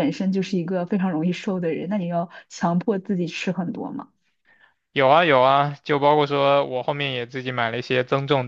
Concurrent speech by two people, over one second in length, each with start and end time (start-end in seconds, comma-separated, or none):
none